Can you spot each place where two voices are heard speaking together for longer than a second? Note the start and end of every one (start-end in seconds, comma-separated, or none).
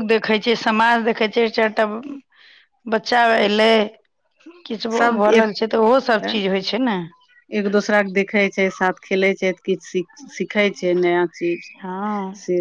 none